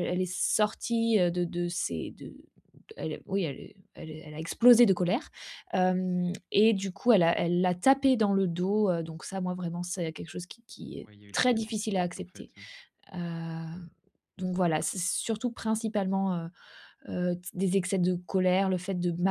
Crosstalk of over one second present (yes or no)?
yes